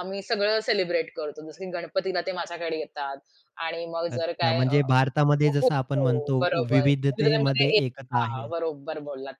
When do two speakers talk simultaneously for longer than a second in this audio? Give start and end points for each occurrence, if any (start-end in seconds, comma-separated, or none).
5.6-8.5